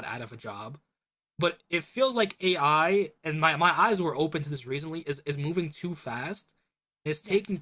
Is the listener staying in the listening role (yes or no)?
yes